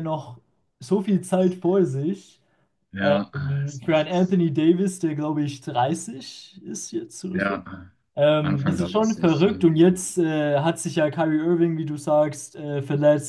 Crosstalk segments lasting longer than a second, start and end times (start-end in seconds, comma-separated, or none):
3.0-4.4, 8.4-9.7